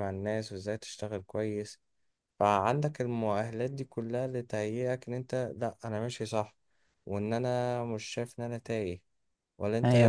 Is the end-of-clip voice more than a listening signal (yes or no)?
yes